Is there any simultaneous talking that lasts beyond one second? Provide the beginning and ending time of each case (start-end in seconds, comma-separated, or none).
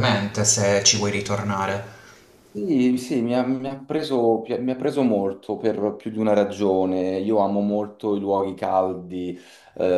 none